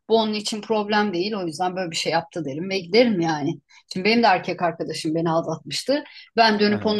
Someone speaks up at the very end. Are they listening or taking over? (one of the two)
listening